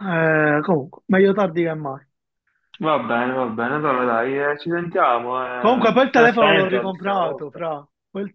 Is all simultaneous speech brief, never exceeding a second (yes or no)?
no